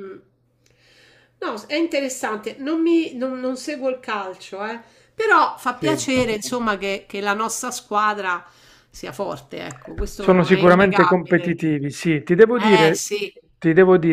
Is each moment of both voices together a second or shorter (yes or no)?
no